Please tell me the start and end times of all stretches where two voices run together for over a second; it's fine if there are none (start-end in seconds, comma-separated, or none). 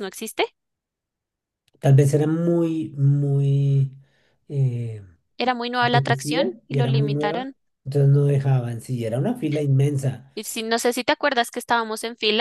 5.8-7.5